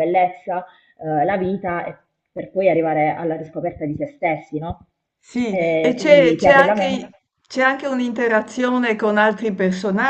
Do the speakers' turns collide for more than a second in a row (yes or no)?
yes